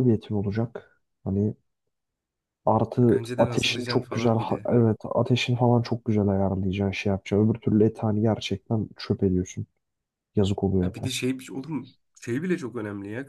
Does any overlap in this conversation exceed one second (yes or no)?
yes